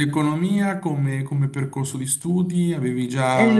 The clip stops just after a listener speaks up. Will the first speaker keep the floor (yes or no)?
no